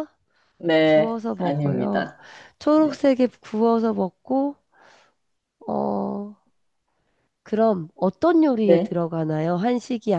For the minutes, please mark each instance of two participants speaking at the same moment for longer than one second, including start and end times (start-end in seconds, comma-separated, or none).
0.8-2.1